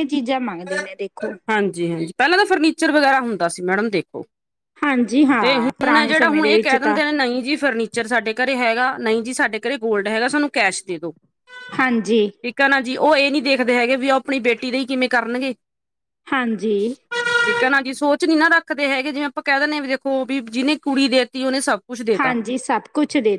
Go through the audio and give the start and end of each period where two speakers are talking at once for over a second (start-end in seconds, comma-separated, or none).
5.4-7.0